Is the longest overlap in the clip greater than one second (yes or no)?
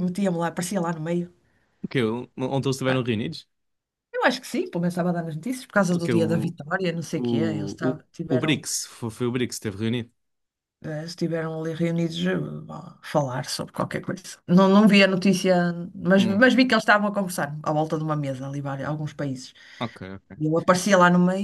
yes